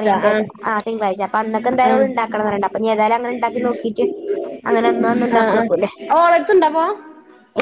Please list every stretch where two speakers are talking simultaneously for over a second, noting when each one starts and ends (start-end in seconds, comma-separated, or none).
none